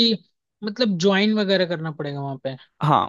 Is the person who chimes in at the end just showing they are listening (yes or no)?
no